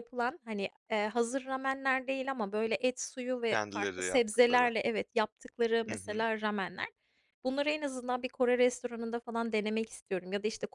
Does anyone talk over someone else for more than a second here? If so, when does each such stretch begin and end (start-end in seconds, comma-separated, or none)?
3.5-4.7